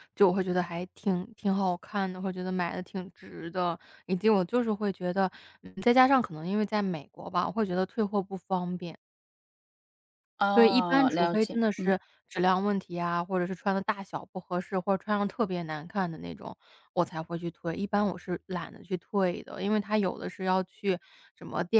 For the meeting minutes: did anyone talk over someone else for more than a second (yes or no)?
yes